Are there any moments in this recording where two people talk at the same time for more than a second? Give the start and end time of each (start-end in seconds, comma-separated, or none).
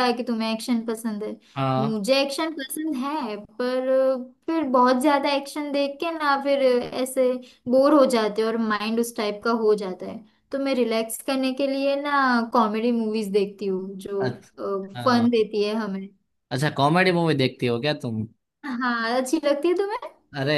none